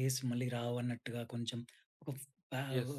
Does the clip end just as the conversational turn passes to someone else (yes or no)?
no